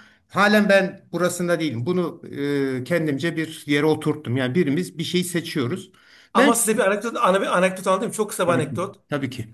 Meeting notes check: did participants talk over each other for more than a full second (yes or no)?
no